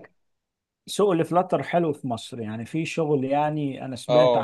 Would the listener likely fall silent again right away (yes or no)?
no